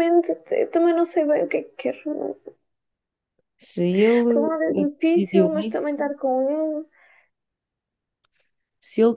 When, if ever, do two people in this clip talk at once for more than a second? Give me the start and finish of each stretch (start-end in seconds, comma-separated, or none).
4.3-5.8